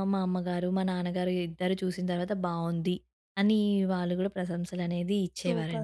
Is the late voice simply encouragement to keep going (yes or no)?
no